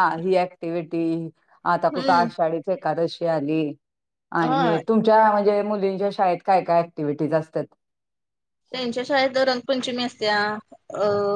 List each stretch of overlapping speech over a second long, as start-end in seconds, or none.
none